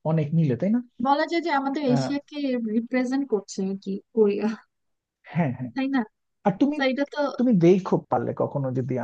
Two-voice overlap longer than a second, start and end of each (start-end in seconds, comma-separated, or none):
none